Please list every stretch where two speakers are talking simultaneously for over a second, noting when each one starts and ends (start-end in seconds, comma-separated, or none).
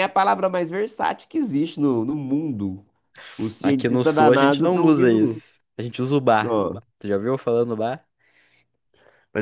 3.6-5.4